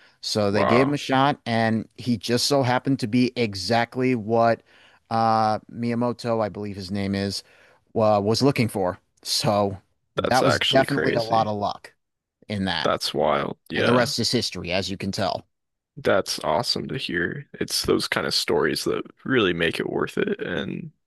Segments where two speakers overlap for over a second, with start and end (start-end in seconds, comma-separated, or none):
10.2-11.5